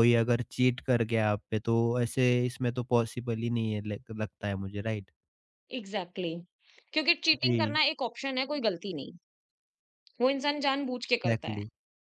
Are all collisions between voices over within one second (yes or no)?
yes